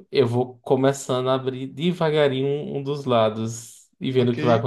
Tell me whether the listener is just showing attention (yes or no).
no